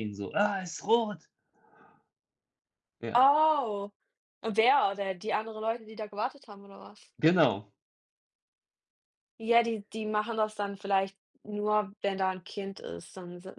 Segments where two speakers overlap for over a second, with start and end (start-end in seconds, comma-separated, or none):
none